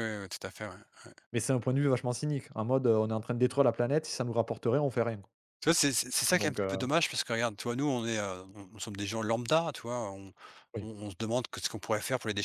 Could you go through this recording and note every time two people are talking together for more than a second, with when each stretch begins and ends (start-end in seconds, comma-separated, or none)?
none